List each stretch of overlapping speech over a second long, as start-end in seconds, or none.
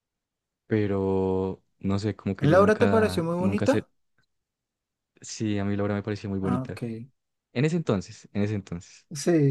2.4-3.8